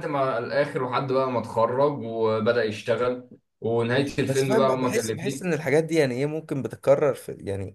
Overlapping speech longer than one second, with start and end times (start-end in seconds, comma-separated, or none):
4.2-5.5